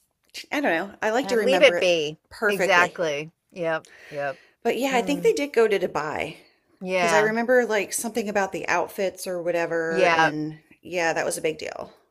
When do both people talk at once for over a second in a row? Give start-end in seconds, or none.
1.2-3.0